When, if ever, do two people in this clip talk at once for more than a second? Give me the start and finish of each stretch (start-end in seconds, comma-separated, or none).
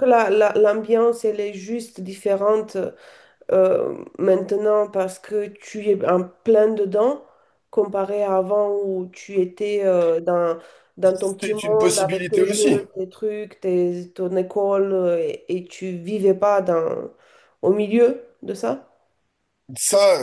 11.4-12.8